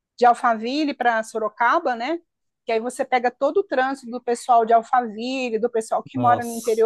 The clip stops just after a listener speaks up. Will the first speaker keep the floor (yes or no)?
yes